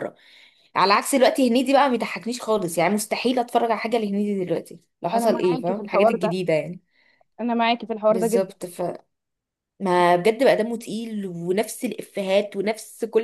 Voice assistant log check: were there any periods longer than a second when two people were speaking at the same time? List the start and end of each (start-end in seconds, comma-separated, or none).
5.1-6.3